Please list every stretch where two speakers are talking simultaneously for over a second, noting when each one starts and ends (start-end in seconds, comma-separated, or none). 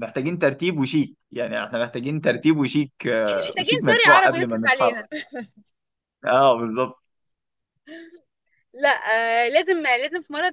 3.3-5.0